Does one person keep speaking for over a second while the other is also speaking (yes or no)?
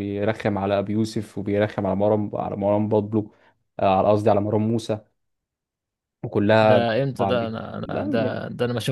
yes